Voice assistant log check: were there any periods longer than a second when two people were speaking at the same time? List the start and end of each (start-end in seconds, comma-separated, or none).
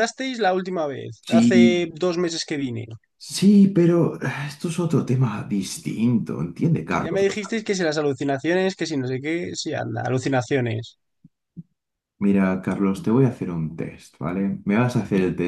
none